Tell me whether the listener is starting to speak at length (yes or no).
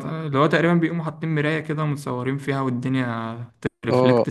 yes